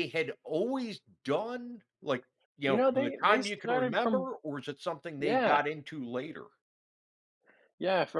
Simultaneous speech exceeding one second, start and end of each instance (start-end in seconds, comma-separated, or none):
2.6-4.3